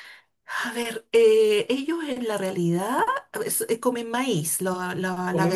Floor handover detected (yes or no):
yes